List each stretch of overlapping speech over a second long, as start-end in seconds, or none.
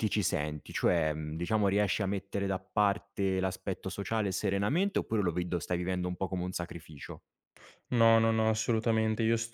none